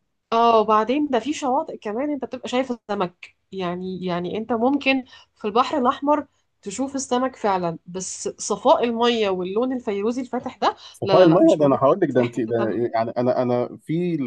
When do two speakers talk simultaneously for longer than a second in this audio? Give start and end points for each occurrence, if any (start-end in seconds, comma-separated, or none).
10.9-12.8